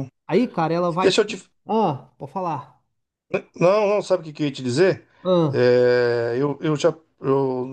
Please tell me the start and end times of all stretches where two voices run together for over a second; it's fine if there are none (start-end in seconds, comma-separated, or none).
none